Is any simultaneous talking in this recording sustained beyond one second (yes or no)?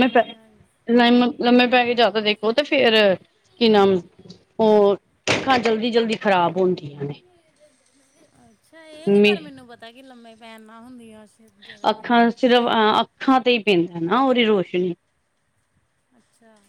no